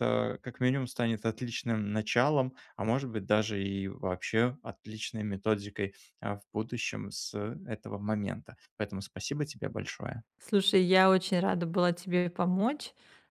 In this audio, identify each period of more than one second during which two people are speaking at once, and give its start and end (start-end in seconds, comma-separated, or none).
none